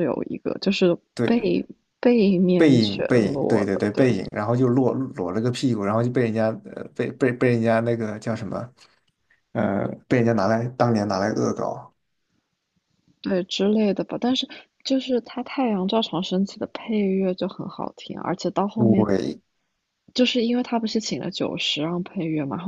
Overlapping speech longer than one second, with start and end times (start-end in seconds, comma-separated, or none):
2.6-4.0